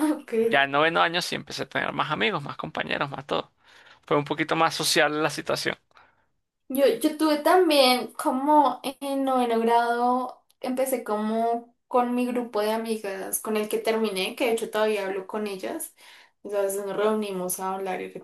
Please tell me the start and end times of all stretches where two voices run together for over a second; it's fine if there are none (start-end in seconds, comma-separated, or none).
none